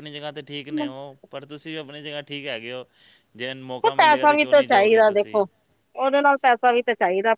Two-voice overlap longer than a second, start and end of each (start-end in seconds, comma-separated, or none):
3.8-5.5